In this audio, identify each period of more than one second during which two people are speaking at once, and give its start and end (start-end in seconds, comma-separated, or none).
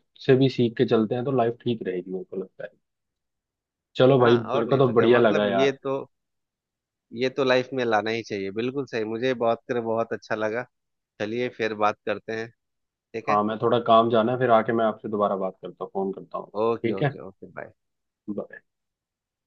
4.2-5.7